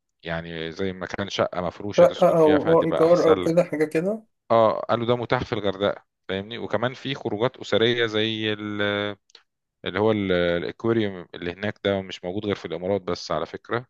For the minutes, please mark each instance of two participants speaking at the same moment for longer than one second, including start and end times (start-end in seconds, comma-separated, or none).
2.0-3.6